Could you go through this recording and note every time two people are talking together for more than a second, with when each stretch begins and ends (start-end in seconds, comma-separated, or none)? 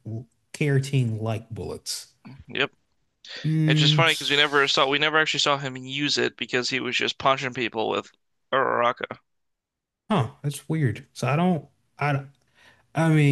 3.7-5.0